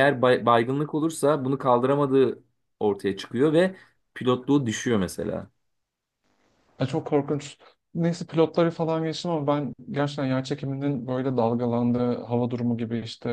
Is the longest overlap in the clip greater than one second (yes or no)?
no